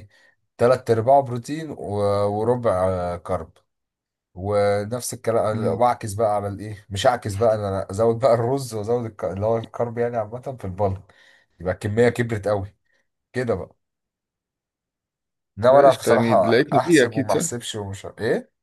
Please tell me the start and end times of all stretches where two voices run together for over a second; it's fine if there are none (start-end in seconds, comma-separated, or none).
15.7-17.4